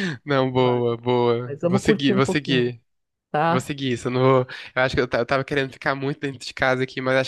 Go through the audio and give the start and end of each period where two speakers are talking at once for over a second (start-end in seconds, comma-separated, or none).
1.4-2.7